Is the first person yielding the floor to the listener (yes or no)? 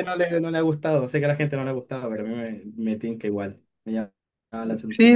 yes